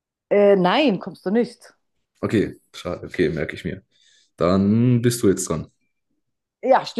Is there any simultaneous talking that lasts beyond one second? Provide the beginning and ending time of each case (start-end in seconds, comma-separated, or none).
none